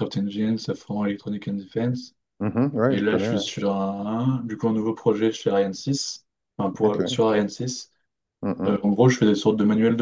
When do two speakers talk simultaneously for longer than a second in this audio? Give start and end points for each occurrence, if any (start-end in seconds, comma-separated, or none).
none